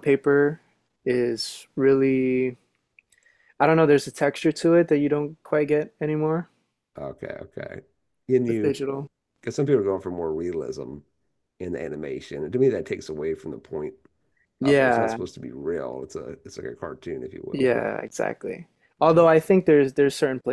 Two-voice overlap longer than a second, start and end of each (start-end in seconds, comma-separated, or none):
none